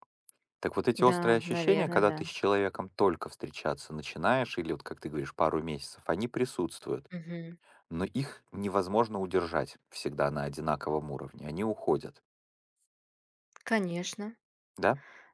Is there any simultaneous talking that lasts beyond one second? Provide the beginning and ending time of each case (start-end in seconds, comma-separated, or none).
0.9-2.2